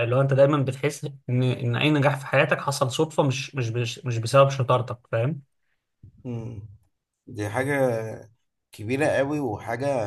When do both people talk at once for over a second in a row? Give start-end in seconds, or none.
none